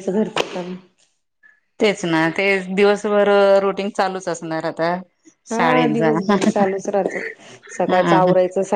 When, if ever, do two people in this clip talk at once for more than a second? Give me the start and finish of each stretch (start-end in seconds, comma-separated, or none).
none